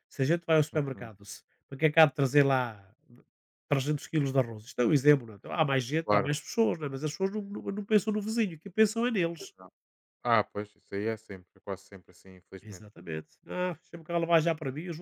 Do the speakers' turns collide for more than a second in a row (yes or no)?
no